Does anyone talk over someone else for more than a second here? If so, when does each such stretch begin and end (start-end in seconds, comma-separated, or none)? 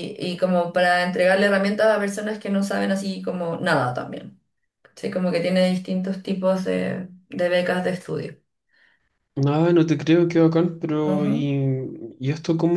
none